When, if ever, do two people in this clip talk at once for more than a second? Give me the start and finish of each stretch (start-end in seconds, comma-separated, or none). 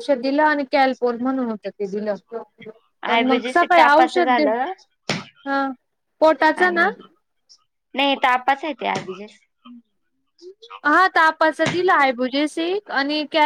3.1-4.4